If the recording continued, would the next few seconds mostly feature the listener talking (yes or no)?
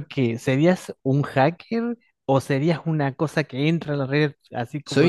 yes